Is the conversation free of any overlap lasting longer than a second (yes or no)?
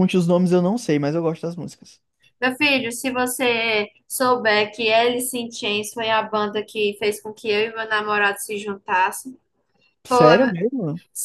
yes